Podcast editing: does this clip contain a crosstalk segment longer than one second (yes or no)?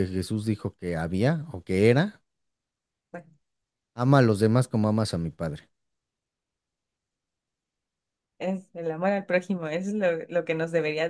no